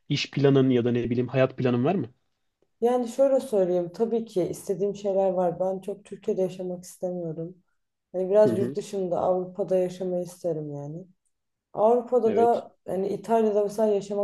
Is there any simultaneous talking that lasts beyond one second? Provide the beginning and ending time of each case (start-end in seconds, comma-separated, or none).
none